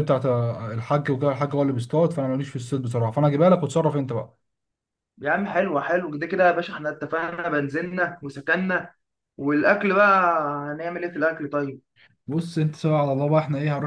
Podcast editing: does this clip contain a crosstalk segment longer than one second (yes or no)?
no